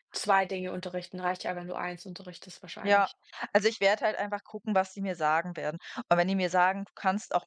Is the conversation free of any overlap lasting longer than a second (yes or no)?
yes